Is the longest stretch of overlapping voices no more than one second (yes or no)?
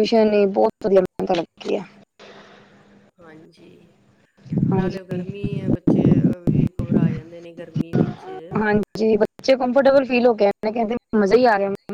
yes